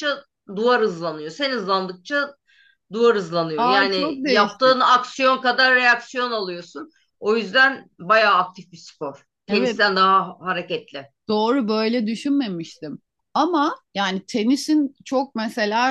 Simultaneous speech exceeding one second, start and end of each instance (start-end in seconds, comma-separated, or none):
3.6-4.8